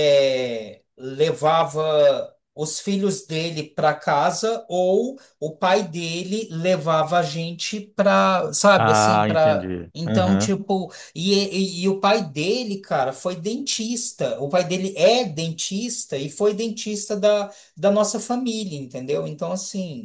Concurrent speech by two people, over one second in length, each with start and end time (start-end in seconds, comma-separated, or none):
8.8-10.5